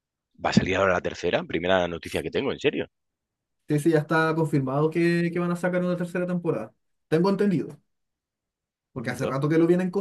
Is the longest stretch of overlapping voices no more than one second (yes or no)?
yes